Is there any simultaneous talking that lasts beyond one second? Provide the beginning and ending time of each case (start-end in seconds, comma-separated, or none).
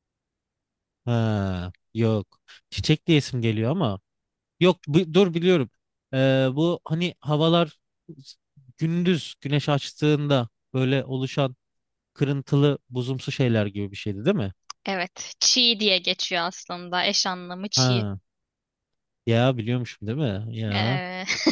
none